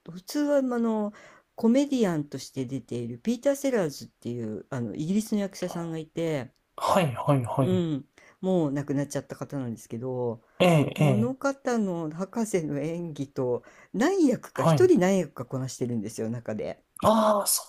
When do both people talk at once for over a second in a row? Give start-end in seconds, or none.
none